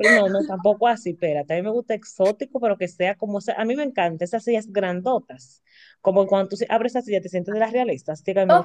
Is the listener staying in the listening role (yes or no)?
no